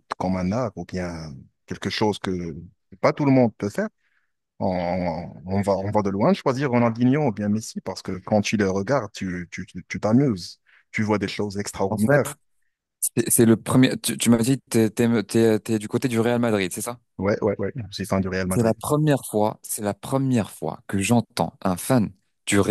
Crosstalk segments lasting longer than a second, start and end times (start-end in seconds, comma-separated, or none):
none